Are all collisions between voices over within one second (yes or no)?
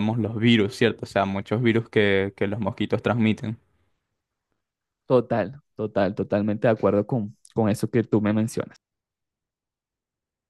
yes